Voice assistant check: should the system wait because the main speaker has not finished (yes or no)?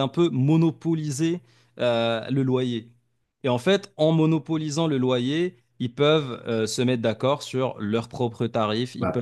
yes